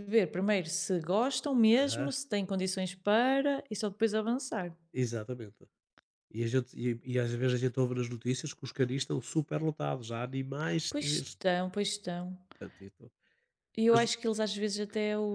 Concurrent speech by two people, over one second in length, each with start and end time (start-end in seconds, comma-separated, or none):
none